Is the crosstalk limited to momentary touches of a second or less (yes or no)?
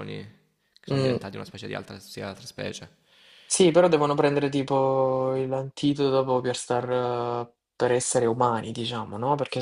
yes